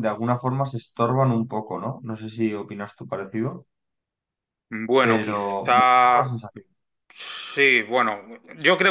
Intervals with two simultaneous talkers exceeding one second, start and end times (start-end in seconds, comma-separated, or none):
5.0-6.4